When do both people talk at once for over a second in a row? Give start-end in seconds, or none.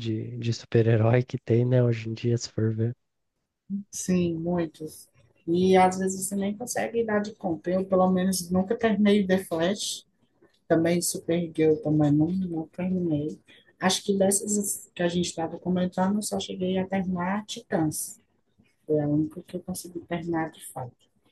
none